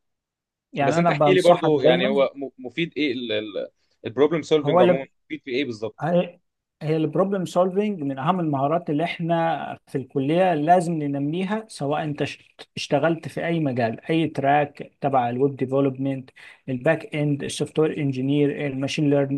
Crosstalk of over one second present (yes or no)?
yes